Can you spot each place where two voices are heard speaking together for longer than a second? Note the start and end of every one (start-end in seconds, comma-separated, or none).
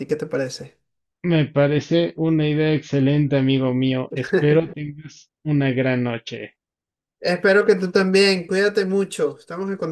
none